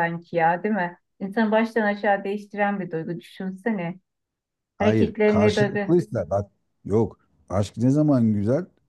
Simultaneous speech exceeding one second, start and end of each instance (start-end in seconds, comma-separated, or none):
4.8-6.0